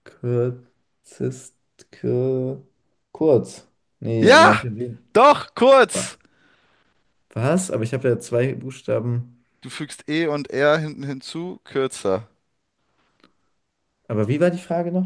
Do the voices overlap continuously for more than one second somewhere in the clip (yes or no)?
no